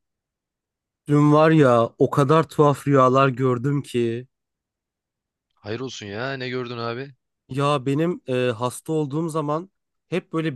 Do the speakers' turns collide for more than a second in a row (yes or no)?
no